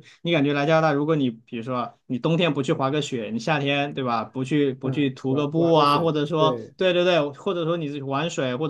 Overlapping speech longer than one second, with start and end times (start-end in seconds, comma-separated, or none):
4.8-6.7